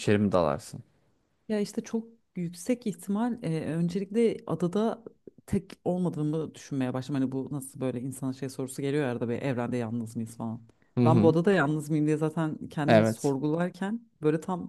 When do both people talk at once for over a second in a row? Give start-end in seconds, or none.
none